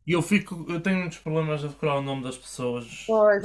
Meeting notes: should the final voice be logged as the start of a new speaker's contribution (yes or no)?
yes